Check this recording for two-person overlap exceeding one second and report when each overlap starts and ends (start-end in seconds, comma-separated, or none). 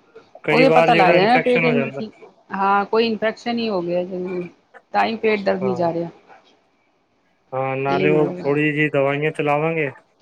0.6-2.0